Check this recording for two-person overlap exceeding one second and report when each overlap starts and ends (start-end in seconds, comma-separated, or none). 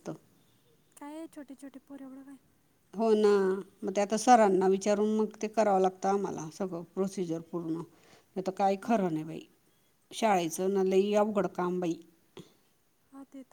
none